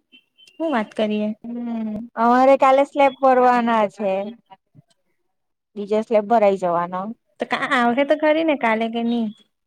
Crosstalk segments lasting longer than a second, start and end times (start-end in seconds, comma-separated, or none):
none